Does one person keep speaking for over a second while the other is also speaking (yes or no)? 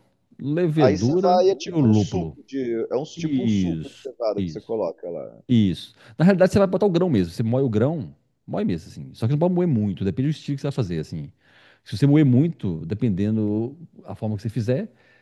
yes